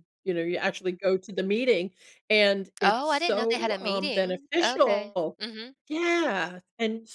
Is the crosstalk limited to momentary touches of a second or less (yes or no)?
no